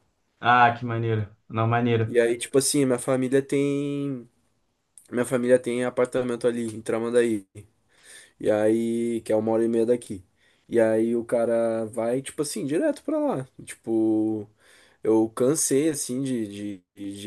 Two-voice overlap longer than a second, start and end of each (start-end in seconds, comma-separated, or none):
none